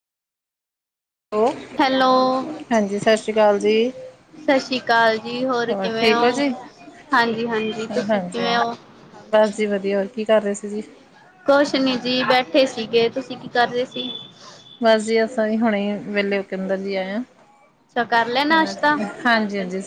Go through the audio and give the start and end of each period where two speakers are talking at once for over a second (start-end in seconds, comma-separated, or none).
none